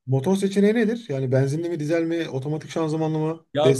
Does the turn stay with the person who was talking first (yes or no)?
no